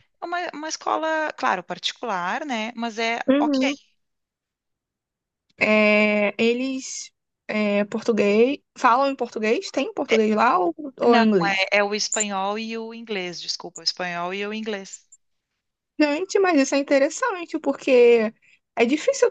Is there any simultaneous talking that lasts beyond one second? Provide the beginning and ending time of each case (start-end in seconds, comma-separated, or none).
none